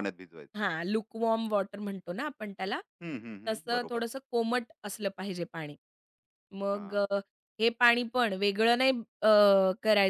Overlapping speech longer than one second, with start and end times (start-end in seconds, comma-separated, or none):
none